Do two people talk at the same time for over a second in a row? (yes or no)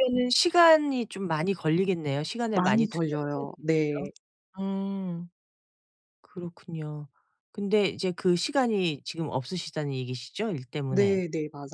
yes